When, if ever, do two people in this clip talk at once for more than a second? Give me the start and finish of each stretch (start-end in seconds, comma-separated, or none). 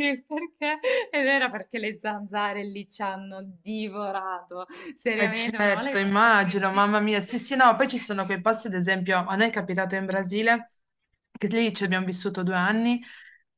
5.2-6.9